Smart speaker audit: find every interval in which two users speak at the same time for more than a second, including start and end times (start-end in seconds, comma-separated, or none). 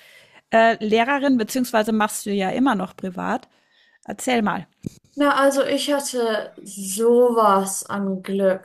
none